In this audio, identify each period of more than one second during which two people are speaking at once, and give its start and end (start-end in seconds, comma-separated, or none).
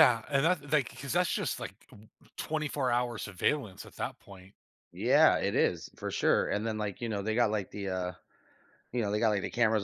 none